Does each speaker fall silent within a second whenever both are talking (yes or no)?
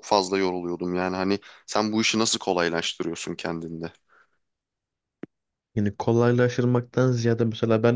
yes